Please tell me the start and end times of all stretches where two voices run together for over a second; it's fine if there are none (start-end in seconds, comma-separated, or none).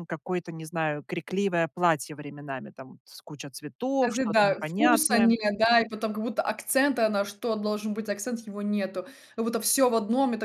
4.0-5.3